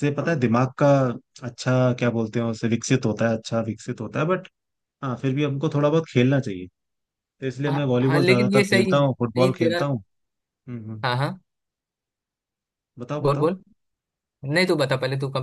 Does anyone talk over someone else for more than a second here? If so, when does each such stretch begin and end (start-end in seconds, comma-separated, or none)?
7.7-9.8